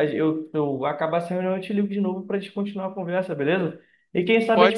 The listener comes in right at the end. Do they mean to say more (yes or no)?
no